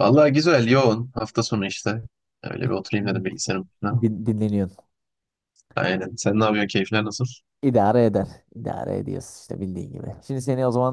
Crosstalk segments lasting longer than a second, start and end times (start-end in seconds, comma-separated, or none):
none